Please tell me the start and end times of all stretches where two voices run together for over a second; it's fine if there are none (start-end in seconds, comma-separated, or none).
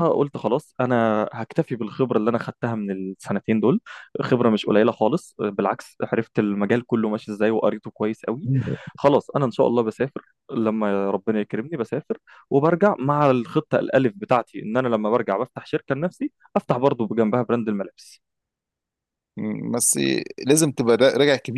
none